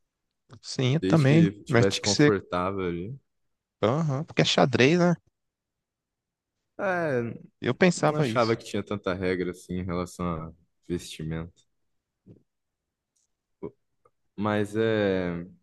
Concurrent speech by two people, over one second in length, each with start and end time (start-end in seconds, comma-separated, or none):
1.0-2.4